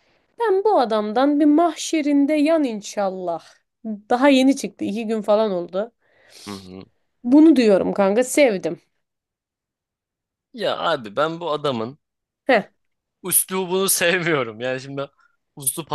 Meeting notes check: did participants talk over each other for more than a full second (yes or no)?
no